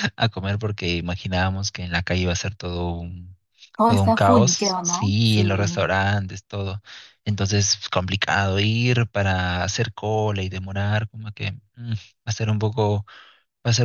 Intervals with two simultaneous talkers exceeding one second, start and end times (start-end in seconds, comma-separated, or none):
3.9-5.9